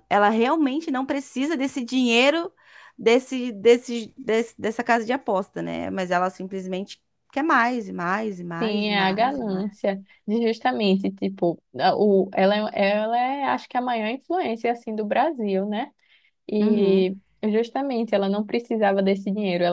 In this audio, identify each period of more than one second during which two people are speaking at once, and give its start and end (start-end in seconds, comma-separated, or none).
8.6-9.8